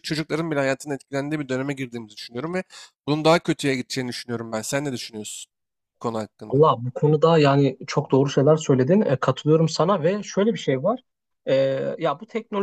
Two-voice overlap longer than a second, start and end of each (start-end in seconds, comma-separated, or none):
none